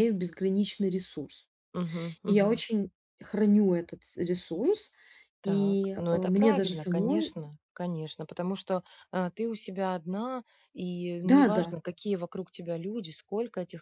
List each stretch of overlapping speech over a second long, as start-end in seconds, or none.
5.4-7.3